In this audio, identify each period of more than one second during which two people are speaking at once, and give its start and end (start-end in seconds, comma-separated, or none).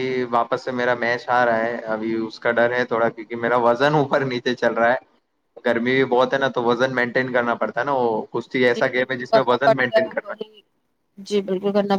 8.7-10.3